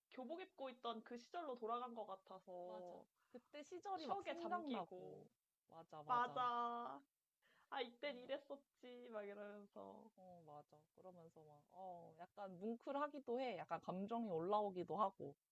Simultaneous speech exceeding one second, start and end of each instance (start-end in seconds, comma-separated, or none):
4.0-5.2